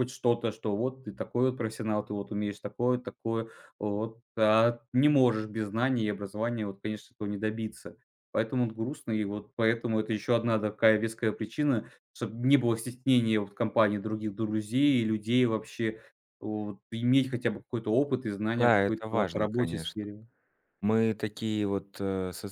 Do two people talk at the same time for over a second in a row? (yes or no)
yes